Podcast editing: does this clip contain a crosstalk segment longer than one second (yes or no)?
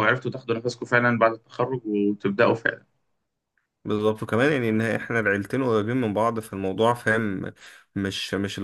no